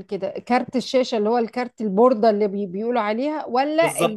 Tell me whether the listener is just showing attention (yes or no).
no